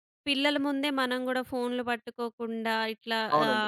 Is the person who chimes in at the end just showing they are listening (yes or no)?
no